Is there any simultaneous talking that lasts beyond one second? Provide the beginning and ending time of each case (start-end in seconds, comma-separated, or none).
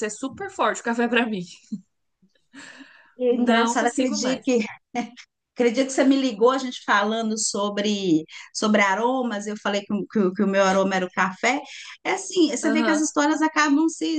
3.3-4.5